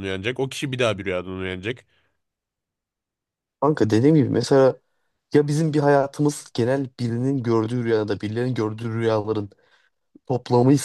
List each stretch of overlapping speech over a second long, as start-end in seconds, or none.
none